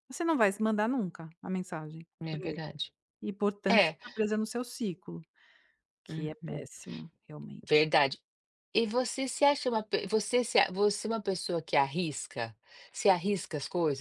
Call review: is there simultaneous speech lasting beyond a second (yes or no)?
no